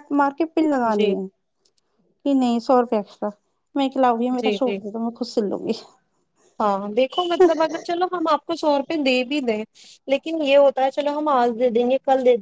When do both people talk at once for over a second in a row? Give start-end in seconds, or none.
none